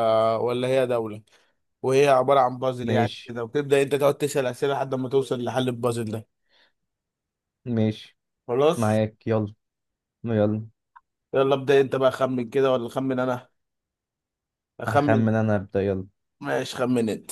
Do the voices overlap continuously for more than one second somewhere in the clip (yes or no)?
no